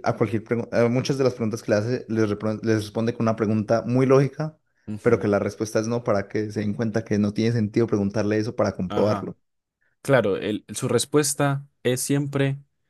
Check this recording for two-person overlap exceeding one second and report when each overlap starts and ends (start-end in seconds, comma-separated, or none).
none